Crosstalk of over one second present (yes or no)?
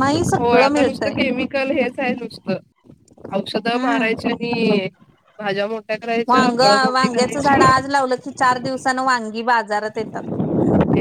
yes